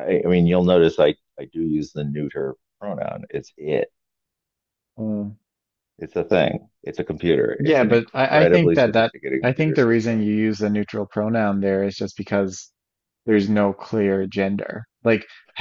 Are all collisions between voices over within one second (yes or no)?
no